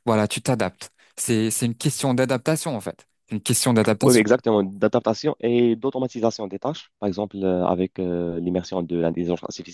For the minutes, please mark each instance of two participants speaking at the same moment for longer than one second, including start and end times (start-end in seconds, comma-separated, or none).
none